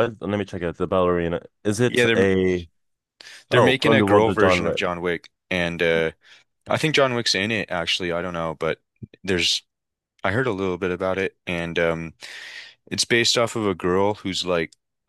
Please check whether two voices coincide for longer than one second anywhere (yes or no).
yes